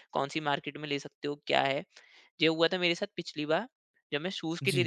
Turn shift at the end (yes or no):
no